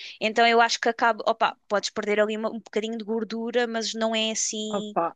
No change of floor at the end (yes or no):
no